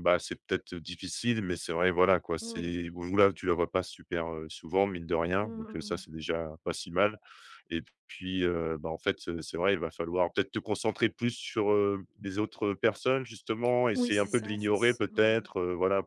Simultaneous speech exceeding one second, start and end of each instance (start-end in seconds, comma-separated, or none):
13.9-15.4